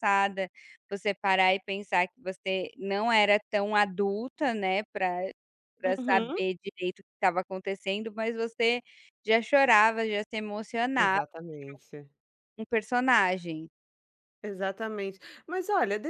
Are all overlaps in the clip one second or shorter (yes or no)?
yes